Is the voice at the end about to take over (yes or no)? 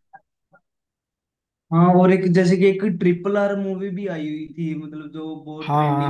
yes